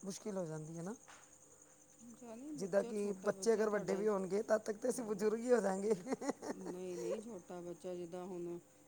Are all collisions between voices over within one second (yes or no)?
no